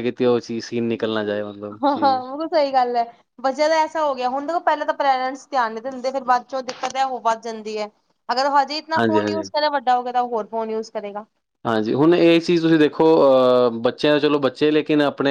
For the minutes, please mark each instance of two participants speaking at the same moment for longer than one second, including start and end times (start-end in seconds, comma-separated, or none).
none